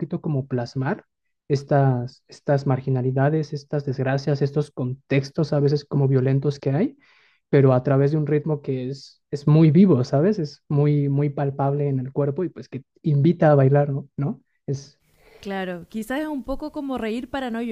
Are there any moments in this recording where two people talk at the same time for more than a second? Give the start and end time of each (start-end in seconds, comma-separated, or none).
none